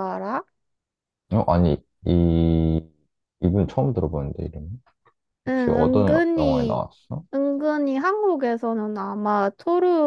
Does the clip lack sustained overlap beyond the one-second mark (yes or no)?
no